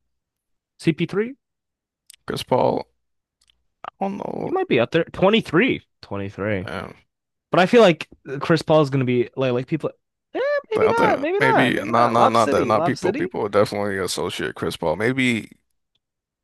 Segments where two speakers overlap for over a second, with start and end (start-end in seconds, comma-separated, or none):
10.8-13.3